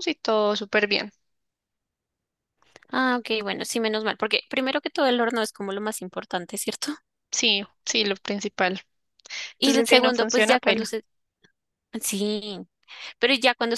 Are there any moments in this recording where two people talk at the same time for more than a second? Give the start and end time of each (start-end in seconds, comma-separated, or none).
9.6-10.9